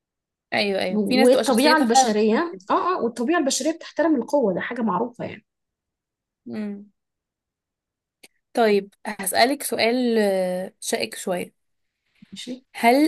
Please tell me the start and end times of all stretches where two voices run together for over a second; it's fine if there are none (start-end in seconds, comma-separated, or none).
0.9-2.6